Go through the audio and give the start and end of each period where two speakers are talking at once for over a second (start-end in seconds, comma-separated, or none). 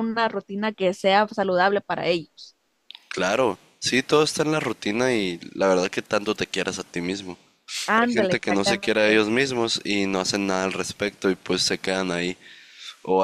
8.0-9.2